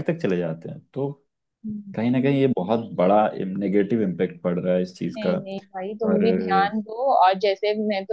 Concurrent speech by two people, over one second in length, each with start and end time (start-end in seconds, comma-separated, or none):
none